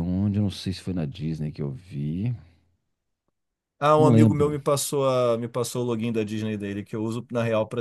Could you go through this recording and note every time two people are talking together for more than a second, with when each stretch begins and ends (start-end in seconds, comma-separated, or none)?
none